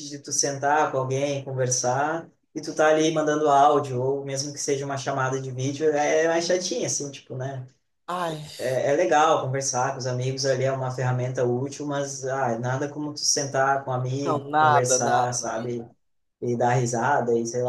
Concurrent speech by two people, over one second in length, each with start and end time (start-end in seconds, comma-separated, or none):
14.2-15.5